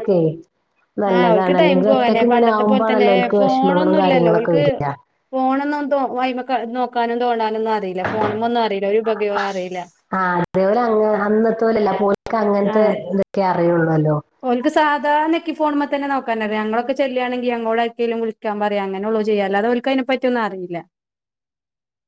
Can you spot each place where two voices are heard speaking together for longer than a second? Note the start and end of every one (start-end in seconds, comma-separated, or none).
1.2-3.1